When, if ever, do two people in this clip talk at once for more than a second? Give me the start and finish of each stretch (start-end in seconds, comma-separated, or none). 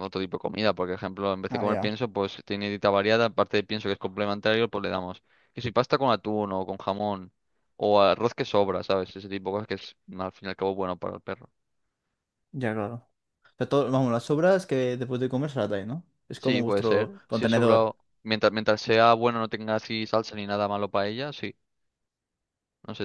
16.4-17.9